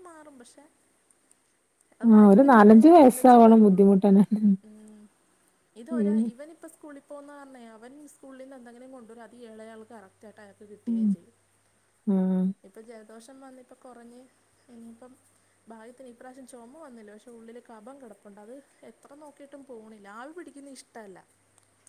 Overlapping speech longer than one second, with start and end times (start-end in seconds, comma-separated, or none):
2.2-3.9